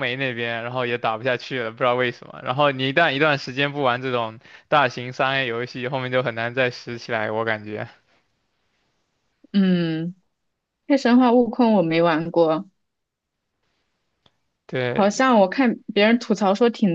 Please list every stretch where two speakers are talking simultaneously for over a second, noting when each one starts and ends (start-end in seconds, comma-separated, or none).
none